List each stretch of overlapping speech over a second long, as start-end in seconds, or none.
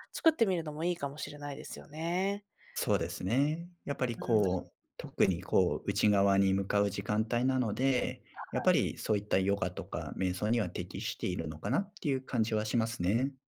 none